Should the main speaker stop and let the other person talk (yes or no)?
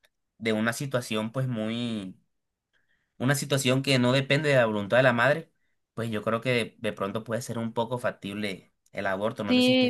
yes